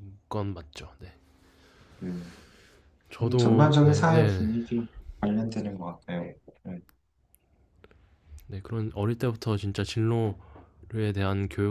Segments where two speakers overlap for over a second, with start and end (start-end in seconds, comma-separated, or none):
3.2-4.5